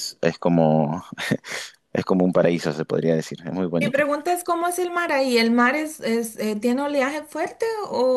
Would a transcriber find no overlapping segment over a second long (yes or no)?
yes